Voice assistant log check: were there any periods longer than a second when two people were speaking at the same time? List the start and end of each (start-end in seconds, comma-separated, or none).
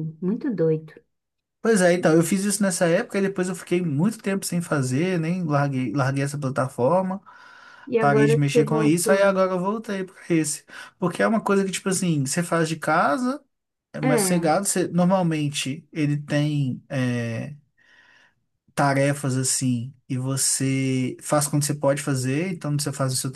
8.0-9.2